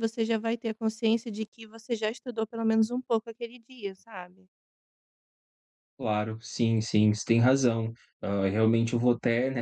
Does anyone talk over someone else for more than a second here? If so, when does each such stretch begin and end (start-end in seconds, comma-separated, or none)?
none